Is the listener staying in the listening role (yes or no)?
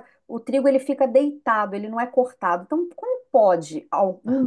no